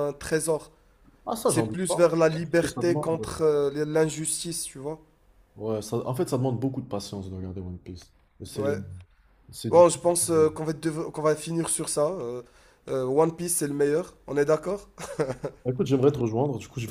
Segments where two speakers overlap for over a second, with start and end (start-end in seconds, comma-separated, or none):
1.4-3.1